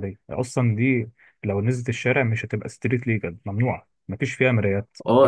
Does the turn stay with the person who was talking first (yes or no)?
no